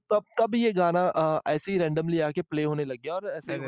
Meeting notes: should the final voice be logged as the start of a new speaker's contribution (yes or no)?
no